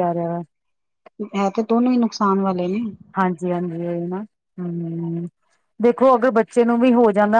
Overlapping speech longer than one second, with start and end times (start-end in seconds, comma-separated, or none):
none